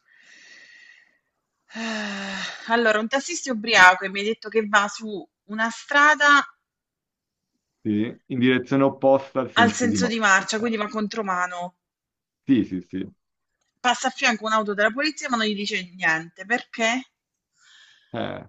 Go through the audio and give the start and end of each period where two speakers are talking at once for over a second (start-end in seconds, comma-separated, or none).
9.5-10.8